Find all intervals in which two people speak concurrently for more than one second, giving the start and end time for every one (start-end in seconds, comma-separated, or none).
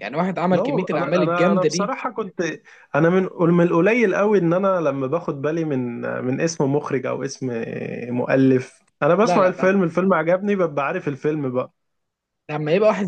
0.5-1.9